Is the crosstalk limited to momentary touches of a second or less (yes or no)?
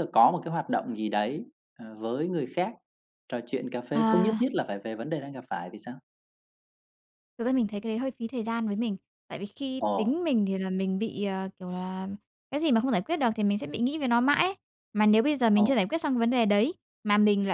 yes